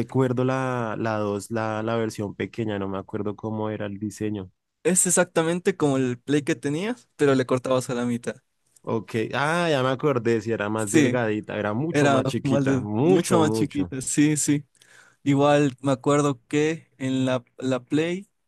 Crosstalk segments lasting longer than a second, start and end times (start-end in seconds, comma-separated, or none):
11.9-13.9